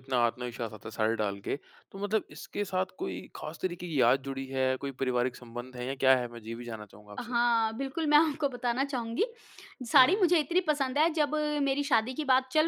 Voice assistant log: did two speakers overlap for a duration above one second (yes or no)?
no